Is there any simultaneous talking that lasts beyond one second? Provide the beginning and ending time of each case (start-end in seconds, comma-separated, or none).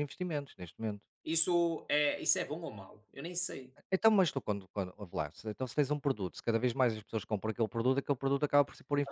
none